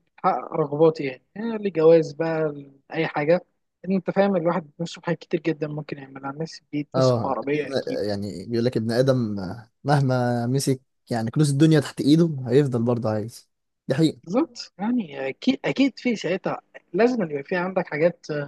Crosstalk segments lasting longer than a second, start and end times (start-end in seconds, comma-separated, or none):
none